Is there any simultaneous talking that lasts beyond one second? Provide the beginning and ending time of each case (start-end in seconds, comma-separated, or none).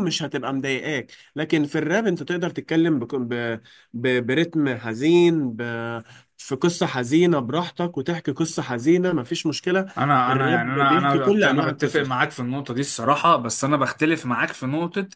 10.3-12.2